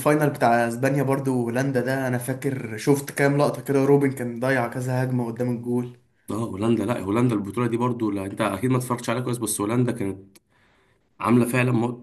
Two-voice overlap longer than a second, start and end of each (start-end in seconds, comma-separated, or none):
none